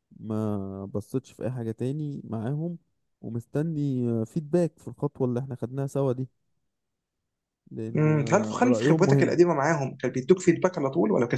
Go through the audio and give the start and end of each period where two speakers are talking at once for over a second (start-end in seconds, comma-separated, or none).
7.9-9.4